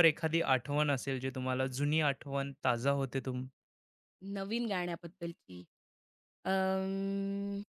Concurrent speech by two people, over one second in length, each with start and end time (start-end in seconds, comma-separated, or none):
none